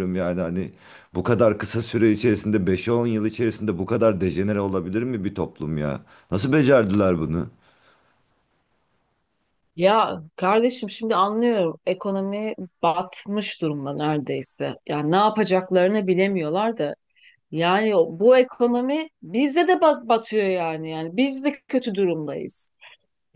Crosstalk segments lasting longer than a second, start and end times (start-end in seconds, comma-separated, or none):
none